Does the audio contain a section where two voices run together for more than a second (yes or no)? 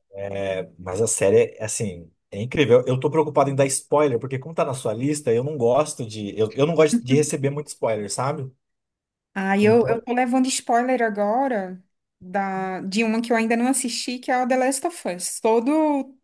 no